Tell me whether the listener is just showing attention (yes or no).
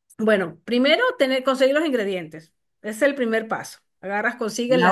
yes